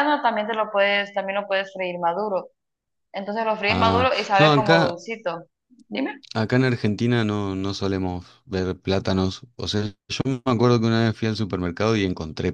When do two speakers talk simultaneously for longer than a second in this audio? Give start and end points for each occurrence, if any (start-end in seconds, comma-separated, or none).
3.7-5.0